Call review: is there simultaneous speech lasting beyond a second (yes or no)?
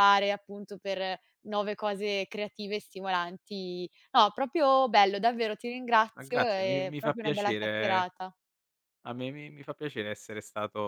yes